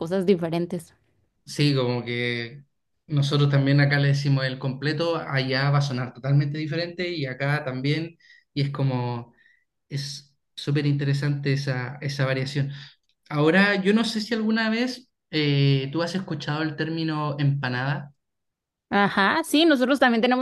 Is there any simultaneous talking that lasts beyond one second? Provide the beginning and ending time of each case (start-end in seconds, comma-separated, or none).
none